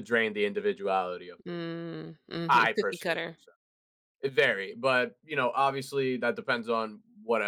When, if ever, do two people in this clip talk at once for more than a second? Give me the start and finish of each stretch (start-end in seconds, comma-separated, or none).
1.5-3.4